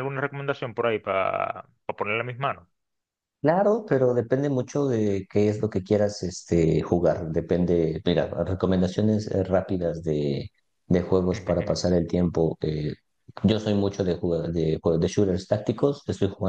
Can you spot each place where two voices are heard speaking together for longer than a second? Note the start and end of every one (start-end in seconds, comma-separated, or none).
none